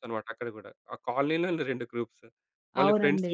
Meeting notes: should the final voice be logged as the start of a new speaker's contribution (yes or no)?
no